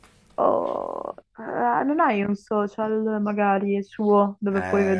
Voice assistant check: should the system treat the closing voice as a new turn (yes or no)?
yes